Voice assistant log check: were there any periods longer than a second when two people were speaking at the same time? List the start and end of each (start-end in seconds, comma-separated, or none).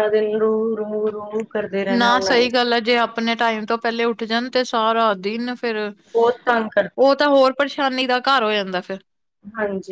none